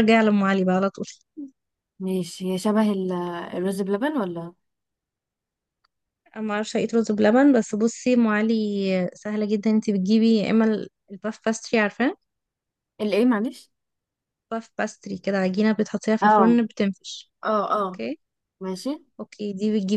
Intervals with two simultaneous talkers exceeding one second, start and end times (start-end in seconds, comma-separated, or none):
none